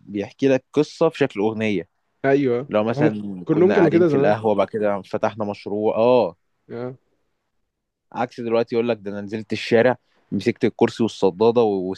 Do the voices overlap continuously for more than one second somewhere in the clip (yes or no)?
yes